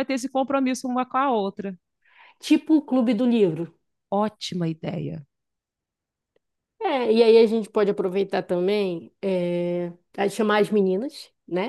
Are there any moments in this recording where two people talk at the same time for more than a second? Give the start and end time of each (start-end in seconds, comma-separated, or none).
none